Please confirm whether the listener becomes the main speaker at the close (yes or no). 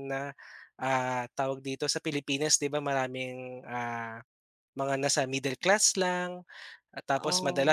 no